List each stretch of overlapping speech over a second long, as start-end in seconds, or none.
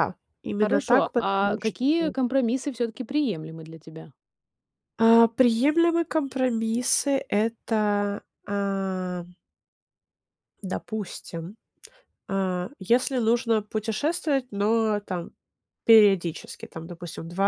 0.6-2.1